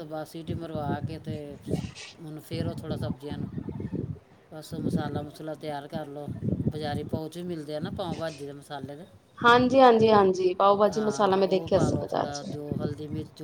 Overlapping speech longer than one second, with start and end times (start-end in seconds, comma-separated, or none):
10.9-12.5